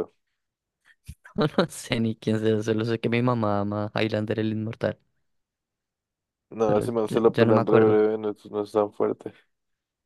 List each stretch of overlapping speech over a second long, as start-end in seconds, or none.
6.7-8.0